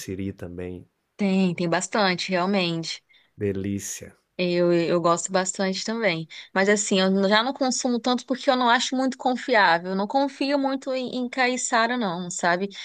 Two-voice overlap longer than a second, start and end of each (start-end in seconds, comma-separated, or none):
none